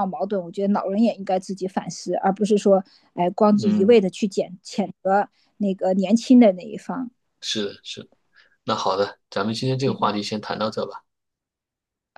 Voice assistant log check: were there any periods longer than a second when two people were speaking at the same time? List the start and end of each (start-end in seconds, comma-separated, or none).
none